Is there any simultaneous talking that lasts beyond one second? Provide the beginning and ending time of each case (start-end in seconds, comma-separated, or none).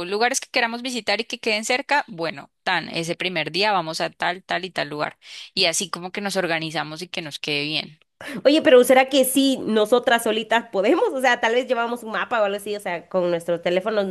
none